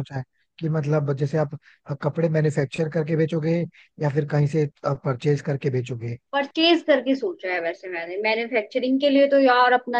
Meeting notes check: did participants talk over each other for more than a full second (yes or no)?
no